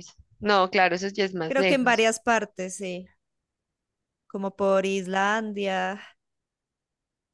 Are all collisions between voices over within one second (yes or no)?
yes